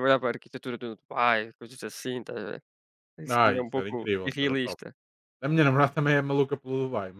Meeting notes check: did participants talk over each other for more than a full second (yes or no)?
yes